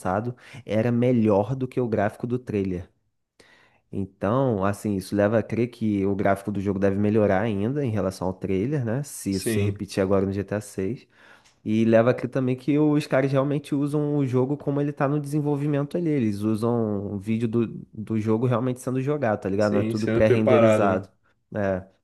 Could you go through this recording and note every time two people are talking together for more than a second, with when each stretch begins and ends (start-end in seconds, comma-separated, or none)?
19.6-21.0